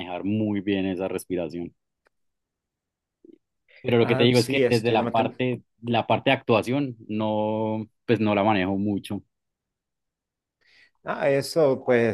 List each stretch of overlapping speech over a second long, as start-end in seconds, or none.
4.0-5.4